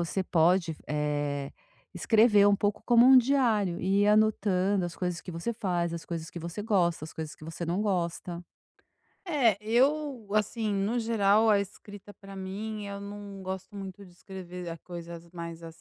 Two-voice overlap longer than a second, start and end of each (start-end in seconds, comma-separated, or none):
none